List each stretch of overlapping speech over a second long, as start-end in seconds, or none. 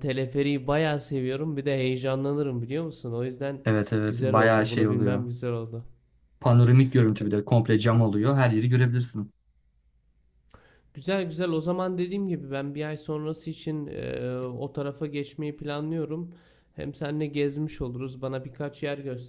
4.1-5.3